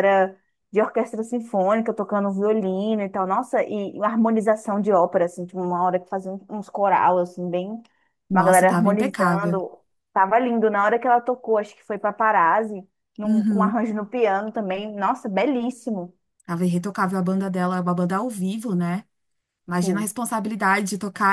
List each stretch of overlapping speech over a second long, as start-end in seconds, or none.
8.3-9.6